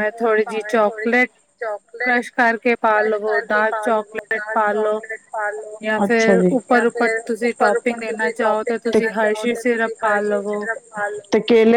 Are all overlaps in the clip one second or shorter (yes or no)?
no